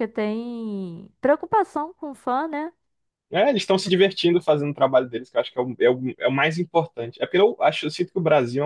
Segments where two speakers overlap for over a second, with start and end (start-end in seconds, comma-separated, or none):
none